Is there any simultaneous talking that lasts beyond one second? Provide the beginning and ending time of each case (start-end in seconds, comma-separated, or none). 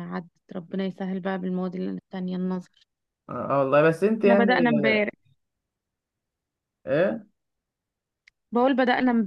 none